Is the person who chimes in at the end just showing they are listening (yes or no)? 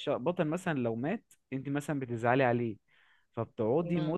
yes